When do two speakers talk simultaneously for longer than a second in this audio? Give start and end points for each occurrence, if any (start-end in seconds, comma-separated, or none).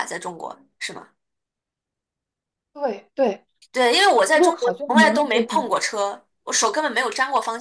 4.3-5.7